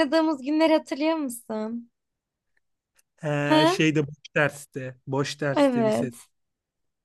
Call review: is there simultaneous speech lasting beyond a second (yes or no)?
no